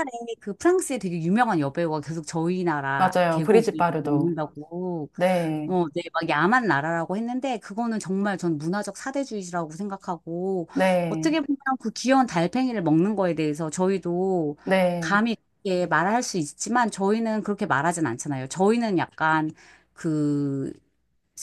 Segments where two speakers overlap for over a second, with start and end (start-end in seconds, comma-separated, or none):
3.0-4.4